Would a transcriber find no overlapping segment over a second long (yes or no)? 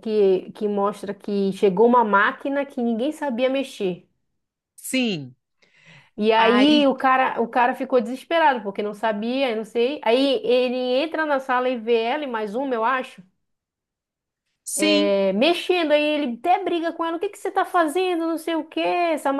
yes